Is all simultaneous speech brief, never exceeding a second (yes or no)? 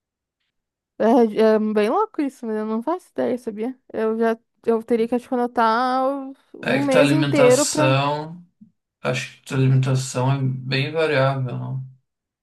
no